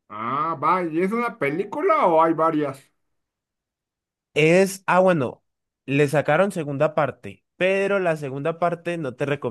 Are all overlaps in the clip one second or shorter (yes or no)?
yes